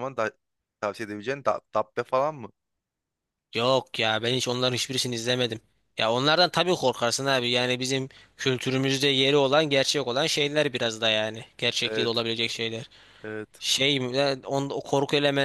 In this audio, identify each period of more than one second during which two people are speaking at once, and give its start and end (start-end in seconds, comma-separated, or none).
none